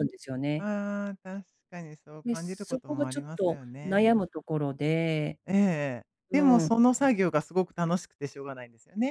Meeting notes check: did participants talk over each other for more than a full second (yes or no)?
yes